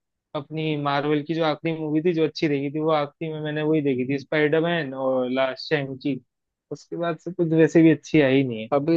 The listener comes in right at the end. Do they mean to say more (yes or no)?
yes